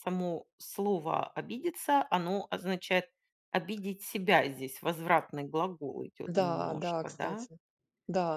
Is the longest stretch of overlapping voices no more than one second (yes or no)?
no